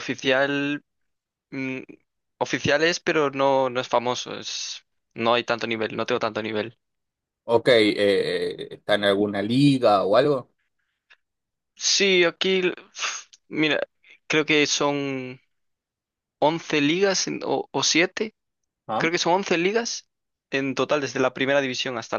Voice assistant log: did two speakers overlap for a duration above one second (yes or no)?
no